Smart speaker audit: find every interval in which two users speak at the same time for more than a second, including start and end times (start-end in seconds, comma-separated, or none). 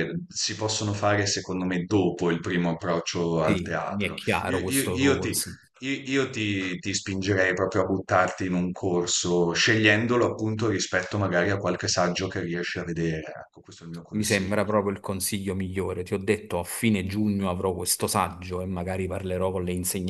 3.4-5.3